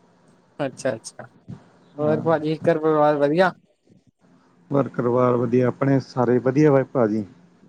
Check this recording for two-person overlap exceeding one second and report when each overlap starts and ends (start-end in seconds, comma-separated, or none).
none